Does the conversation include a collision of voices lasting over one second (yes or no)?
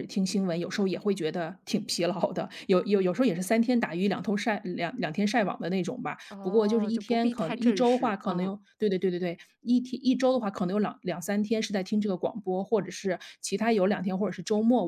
yes